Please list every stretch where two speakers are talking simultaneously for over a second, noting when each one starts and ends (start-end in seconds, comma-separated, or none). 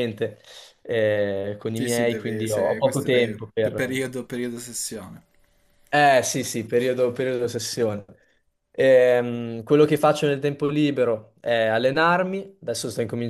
1.7-4.1